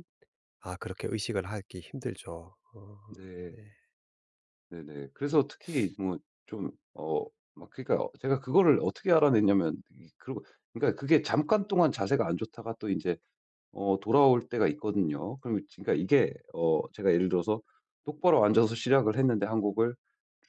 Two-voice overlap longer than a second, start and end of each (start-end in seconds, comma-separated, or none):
none